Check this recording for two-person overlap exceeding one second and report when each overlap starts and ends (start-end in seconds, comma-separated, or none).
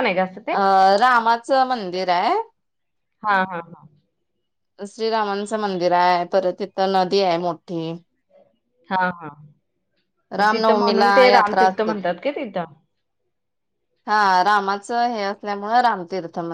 10.5-11.9